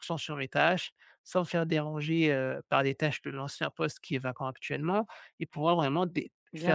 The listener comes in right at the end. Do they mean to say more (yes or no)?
no